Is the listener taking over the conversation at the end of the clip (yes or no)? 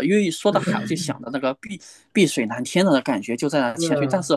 no